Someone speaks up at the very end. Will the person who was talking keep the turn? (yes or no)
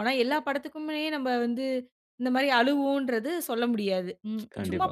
yes